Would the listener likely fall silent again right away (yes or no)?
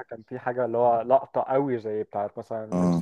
no